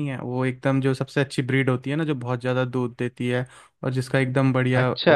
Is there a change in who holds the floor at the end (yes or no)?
no